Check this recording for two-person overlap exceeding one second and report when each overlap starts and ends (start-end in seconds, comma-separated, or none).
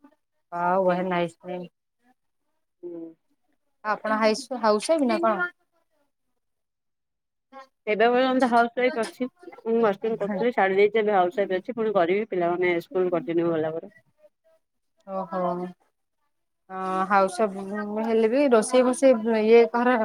none